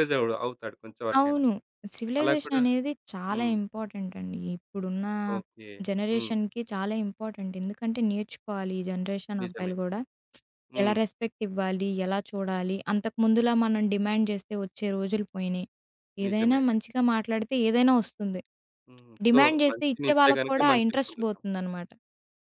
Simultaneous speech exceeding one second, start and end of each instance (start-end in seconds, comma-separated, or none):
19.3-21.4